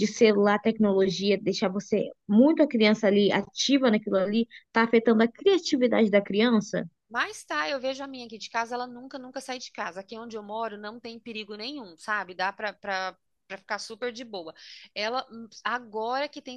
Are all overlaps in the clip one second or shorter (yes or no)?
yes